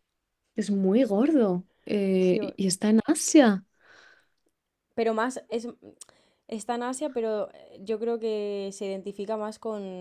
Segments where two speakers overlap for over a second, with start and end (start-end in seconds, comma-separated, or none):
none